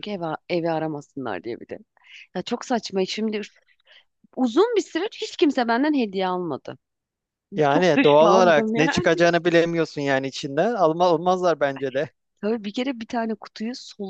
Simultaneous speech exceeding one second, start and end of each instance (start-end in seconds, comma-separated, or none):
7.7-9.1